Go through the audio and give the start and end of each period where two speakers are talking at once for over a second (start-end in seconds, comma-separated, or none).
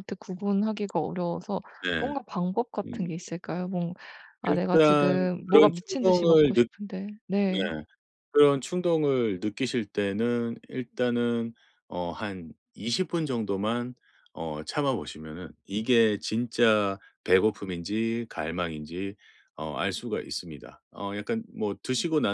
4.5-6.7